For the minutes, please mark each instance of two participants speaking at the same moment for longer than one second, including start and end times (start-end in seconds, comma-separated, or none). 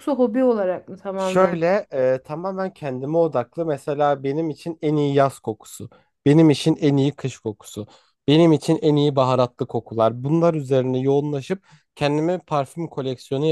none